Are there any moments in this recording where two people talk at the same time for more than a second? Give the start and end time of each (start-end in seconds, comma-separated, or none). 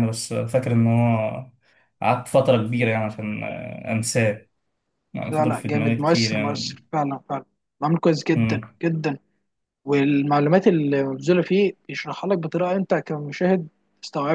5.3-6.8